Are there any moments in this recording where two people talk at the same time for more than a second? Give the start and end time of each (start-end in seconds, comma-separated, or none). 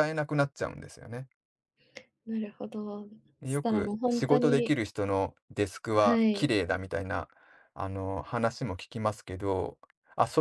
3.4-4.8